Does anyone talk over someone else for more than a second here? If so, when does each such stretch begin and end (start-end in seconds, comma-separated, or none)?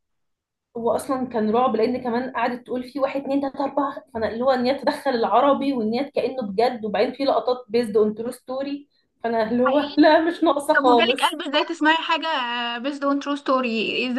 none